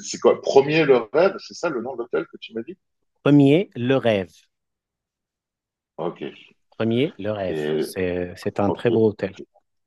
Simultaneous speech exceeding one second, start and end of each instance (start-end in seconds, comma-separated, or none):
none